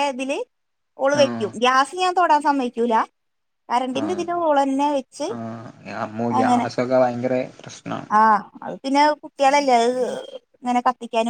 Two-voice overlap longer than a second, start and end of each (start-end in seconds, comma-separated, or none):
none